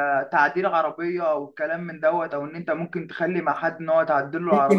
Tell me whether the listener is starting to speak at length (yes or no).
yes